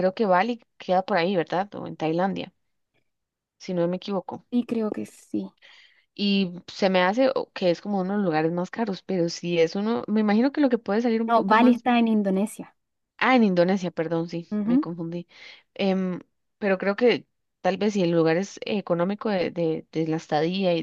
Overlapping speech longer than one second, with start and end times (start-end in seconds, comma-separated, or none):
none